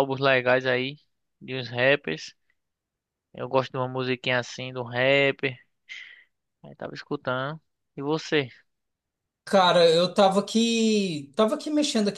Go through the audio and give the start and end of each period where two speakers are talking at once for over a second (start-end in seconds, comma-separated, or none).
none